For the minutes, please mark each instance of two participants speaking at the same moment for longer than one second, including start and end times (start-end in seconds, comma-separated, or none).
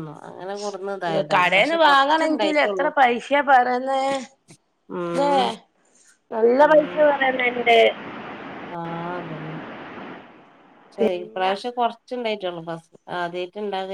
1.3-2.9